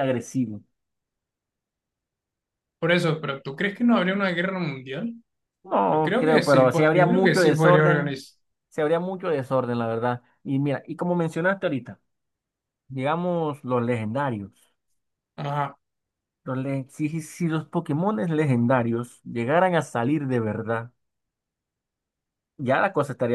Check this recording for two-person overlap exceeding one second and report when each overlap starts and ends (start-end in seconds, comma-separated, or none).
5.9-8.2